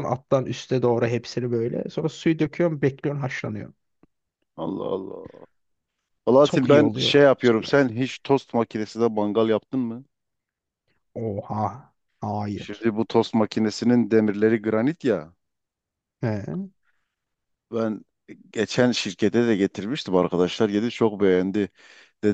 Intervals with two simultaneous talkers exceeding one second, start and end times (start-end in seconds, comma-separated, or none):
6.4-7.7